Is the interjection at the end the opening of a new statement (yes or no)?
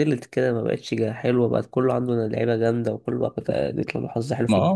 yes